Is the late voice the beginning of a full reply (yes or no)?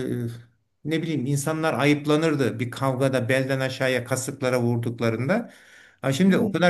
no